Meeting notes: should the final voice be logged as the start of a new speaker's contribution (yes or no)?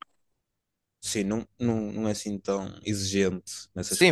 yes